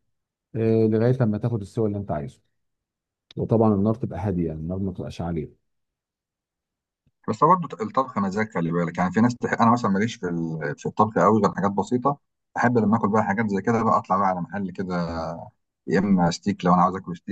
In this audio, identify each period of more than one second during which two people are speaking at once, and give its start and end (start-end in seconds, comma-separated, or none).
none